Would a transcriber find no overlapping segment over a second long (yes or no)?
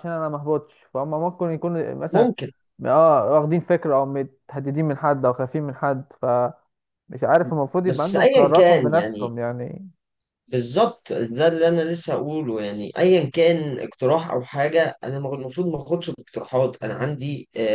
no